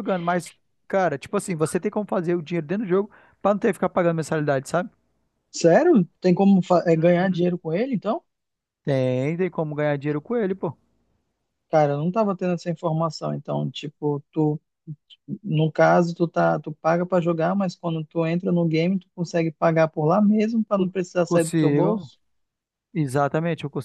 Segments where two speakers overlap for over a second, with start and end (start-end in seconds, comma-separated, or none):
20.8-22.1